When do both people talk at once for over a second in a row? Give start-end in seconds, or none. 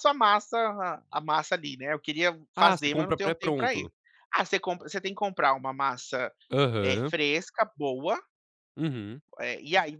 2.5-3.9